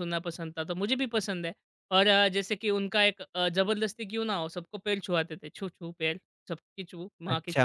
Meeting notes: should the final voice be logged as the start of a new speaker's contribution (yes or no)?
yes